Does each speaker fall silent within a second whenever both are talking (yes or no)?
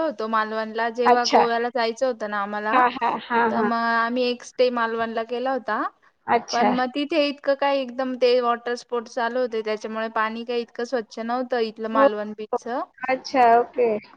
yes